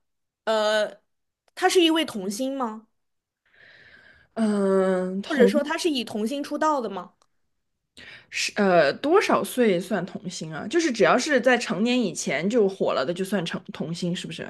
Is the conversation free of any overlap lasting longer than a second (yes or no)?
yes